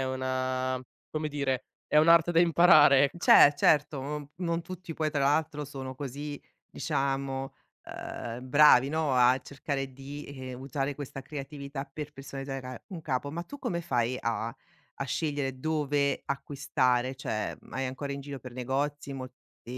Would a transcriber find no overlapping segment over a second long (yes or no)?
yes